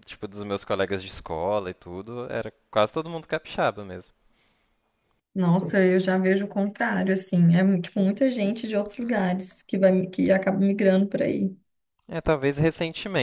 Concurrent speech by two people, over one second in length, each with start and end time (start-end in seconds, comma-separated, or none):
none